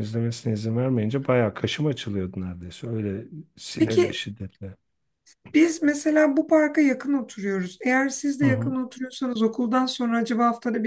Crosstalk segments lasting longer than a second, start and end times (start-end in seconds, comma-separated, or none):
none